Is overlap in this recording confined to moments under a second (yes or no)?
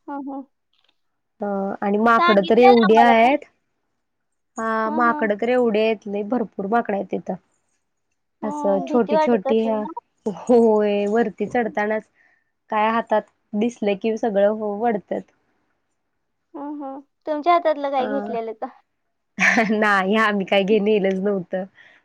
no